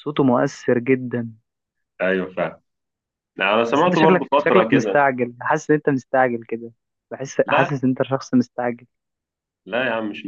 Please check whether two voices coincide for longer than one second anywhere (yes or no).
yes